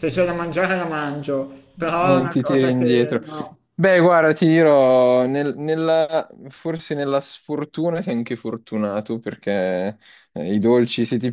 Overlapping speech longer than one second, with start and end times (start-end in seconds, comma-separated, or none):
2.0-3.2